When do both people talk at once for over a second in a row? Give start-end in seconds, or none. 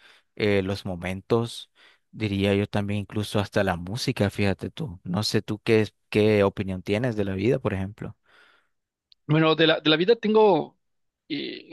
none